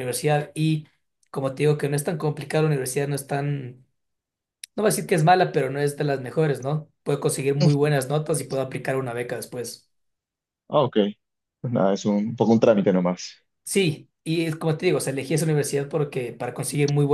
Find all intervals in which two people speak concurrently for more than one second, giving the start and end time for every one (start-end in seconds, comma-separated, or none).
none